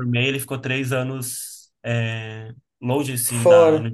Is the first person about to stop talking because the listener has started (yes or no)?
no